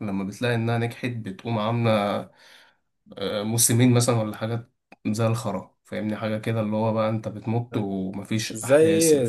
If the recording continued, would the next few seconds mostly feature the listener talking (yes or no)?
yes